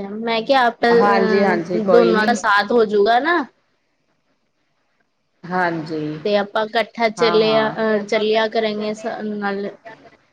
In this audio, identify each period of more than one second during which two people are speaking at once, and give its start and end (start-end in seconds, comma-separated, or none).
1.0-2.4